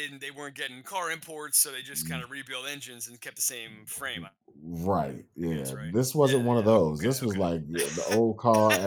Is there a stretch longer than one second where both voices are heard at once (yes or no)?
yes